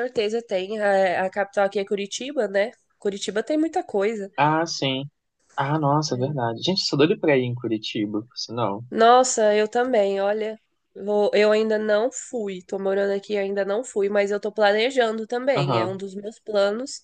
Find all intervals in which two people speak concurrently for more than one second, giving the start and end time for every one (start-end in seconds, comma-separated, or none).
none